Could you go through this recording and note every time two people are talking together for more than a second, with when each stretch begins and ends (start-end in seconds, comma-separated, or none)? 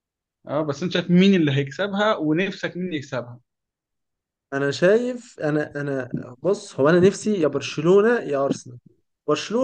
none